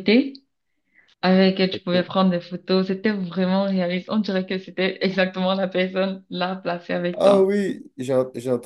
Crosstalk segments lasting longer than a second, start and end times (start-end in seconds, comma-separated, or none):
none